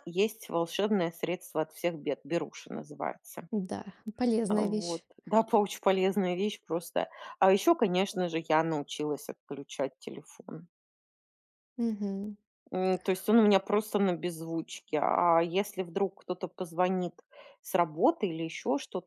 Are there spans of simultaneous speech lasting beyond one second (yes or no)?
no